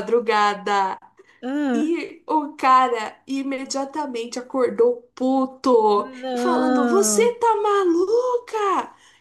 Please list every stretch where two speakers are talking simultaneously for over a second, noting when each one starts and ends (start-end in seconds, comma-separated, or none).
5.9-7.3